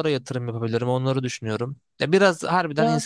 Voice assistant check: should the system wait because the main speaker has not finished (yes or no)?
yes